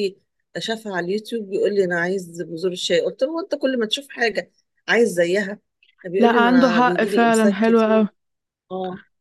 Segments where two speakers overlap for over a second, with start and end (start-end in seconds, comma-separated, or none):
6.2-8.1